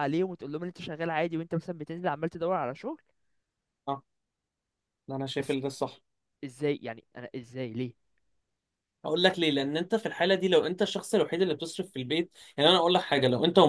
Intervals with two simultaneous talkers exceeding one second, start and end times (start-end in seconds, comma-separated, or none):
none